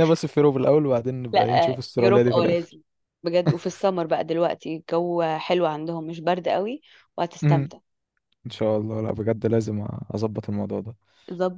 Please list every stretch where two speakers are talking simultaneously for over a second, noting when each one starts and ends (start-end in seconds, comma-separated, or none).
1.3-2.8